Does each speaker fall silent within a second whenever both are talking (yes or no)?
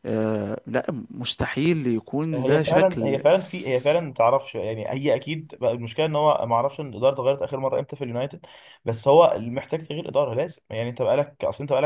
no